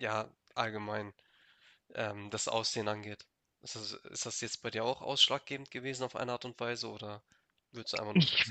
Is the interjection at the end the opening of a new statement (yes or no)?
yes